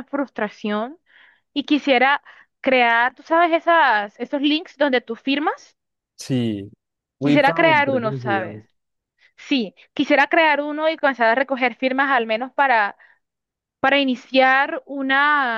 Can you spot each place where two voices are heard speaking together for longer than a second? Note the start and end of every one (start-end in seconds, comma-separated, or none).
7.2-8.6